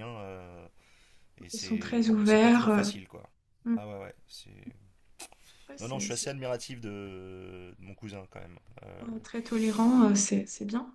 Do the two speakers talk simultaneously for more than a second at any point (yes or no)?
yes